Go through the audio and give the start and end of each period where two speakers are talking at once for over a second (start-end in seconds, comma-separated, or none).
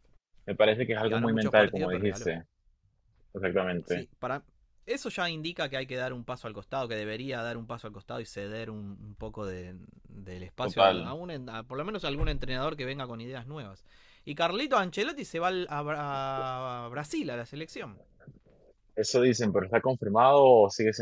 1.0-2.3